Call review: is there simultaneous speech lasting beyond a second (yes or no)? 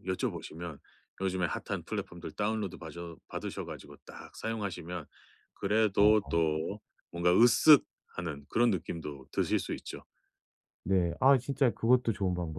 no